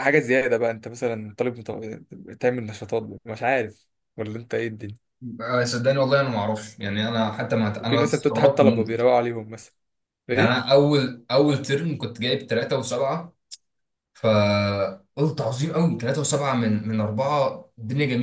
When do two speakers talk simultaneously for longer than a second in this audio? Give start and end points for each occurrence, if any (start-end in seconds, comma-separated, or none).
7.8-9.0